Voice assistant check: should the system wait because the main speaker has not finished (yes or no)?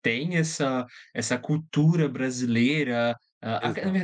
yes